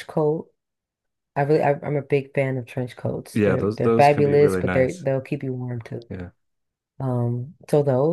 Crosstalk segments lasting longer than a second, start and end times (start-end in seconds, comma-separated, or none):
3.3-5.0